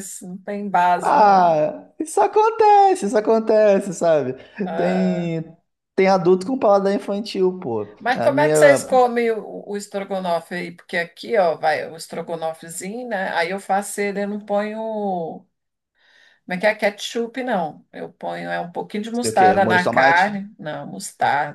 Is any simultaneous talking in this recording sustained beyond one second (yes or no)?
yes